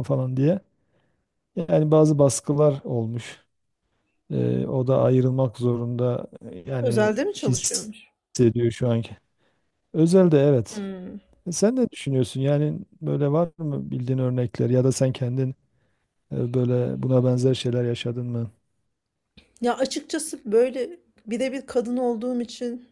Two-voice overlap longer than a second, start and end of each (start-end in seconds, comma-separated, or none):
6.8-8.1